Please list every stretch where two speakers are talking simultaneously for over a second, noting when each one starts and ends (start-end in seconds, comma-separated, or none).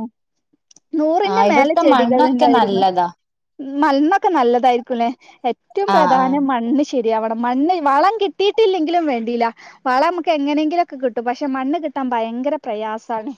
1.3-2.8